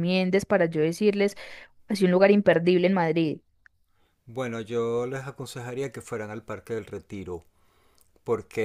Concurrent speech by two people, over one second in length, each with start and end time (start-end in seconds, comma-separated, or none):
none